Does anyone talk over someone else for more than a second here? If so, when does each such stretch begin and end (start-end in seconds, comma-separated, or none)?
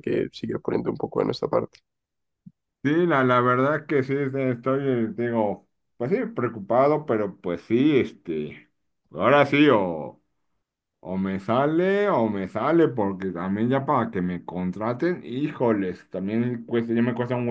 none